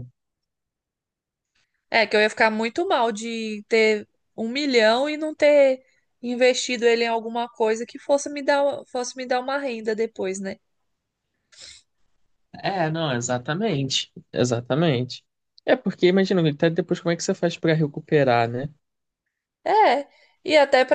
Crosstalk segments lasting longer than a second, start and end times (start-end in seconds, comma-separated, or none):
none